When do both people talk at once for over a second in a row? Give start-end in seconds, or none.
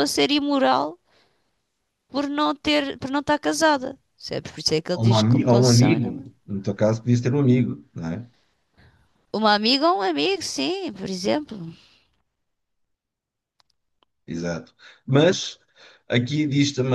4.9-6.3